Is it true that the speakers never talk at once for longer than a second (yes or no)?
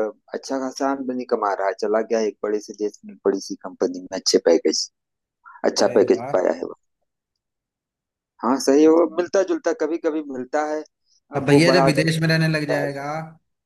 no